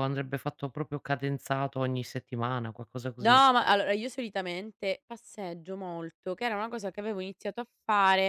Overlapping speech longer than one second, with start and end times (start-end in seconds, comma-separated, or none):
none